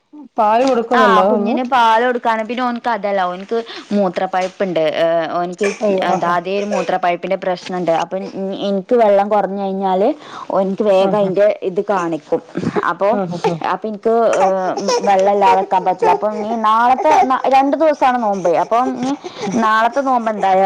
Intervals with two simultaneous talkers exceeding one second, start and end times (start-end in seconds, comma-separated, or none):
none